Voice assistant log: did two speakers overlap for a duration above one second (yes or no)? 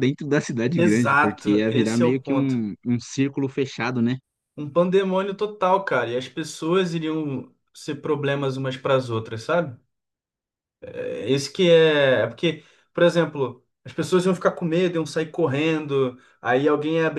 yes